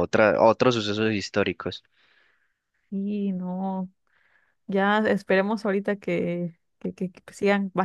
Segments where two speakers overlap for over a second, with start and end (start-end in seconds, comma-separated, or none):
none